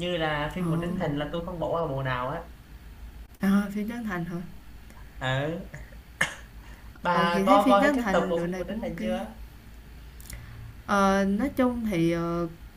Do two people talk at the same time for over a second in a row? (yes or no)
yes